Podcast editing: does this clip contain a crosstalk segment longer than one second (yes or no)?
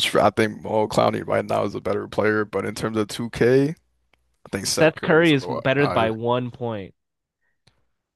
yes